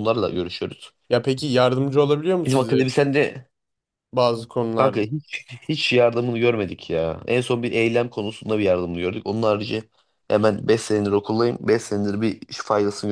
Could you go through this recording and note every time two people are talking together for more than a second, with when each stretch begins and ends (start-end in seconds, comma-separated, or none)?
none